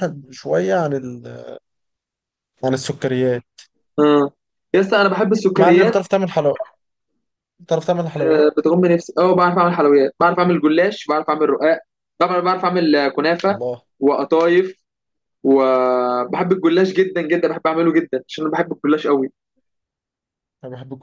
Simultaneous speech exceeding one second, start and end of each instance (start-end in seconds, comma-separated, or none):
none